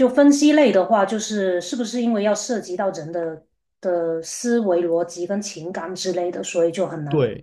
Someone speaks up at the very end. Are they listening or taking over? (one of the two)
taking over